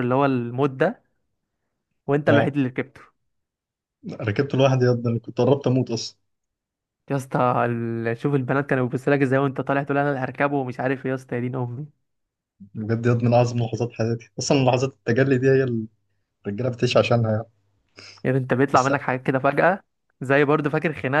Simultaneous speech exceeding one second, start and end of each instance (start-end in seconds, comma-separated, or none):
none